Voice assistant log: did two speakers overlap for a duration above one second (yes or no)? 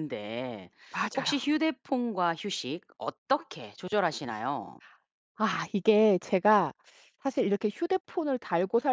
no